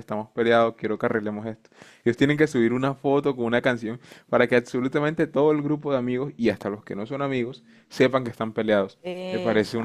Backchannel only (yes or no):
yes